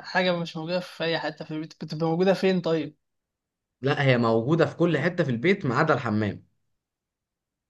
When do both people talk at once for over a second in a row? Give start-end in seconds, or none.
none